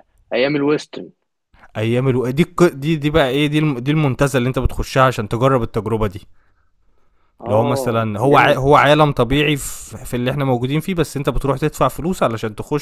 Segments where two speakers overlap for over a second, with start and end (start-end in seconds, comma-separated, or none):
7.5-8.9